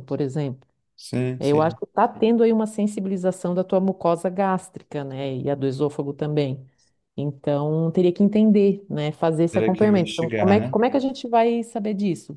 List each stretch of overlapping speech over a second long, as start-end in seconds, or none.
9.5-10.7